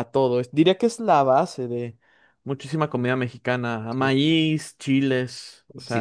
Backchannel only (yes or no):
no